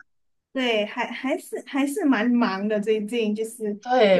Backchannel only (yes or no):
no